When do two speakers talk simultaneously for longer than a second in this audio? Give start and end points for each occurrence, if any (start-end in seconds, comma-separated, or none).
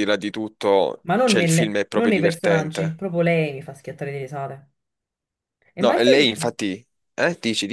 1.1-3.0